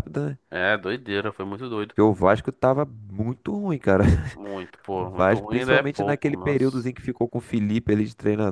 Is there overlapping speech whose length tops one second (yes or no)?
yes